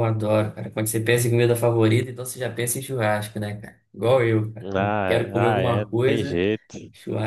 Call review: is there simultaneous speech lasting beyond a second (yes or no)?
yes